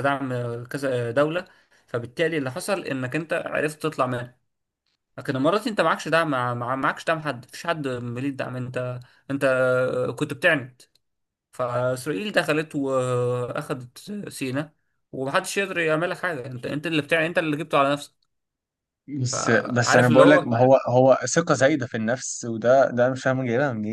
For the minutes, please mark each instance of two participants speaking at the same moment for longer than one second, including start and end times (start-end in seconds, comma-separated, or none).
19.3-20.5